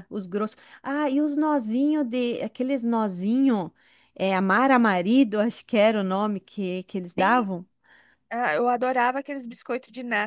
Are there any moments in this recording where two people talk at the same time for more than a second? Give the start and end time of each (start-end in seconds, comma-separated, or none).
none